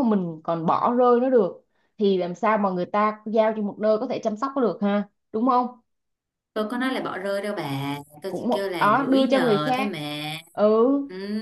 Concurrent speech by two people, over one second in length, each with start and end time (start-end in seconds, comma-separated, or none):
8.3-9.9